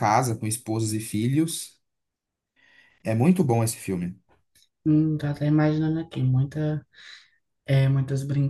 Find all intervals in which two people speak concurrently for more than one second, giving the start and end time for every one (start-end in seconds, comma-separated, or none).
none